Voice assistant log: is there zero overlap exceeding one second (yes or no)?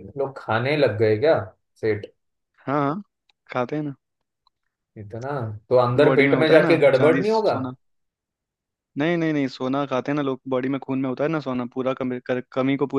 no